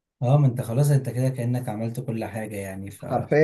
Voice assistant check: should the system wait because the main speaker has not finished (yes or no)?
no